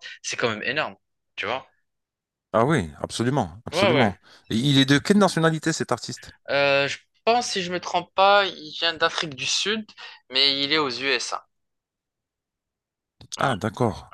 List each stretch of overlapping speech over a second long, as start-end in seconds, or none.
none